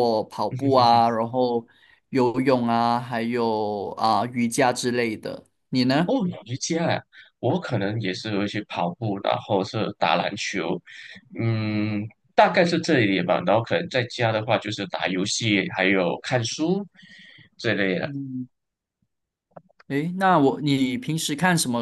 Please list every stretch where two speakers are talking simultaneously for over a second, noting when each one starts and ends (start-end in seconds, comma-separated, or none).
none